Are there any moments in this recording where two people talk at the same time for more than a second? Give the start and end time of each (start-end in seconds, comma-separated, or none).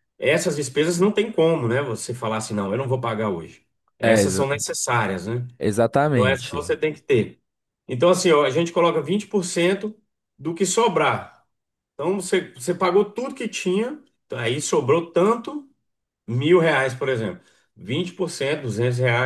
none